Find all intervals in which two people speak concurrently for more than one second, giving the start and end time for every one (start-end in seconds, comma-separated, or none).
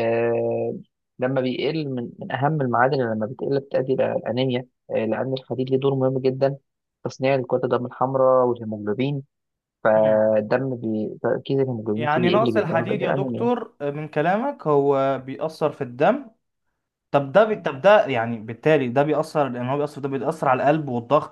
11.9-13.5